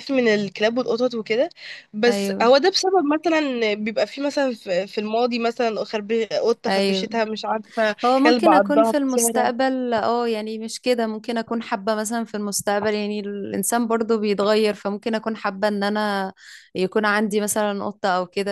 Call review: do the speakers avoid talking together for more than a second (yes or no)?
no